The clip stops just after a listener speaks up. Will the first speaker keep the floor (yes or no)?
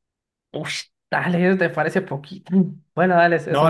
no